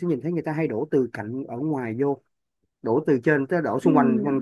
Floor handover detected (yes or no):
no